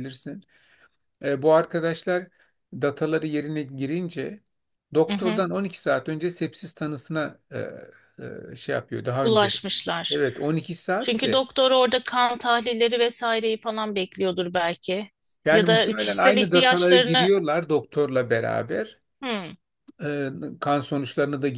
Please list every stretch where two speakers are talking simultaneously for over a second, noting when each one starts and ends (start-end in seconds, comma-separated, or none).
15.5-17.3